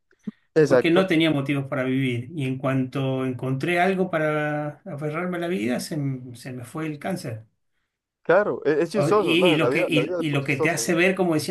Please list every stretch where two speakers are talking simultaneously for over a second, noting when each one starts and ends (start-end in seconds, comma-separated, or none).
8.9-10.9